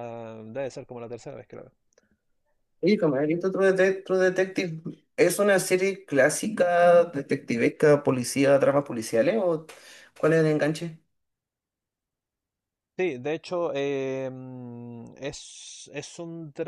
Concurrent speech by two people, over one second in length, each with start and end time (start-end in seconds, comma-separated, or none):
none